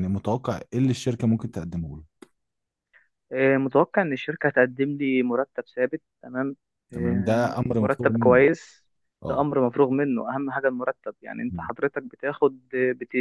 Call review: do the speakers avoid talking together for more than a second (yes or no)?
no